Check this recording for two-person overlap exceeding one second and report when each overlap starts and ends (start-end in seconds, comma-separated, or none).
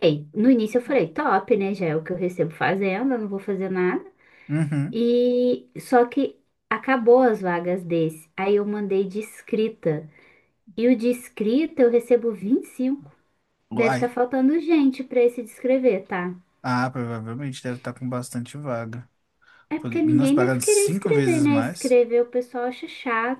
19.8-22.0